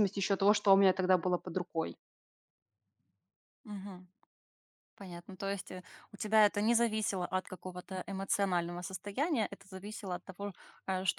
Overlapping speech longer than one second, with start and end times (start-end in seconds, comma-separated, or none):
none